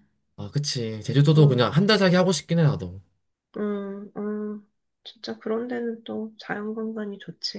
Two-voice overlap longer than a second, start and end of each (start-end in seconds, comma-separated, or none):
none